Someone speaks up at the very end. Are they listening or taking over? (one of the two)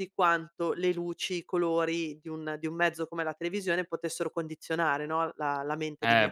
taking over